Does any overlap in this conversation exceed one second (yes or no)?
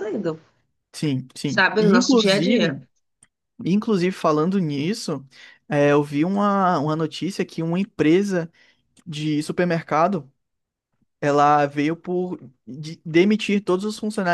yes